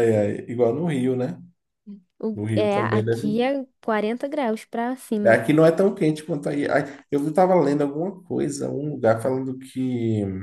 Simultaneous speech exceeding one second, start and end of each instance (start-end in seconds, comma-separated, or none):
2.3-3.6